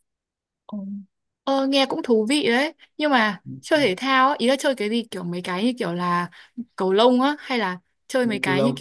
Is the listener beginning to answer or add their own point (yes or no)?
yes